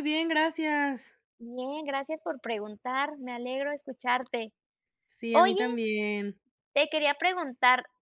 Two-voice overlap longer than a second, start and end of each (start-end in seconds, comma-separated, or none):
none